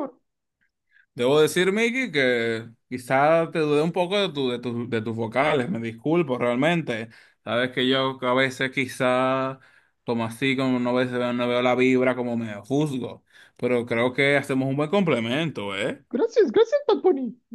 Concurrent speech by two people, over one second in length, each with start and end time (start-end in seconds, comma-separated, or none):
none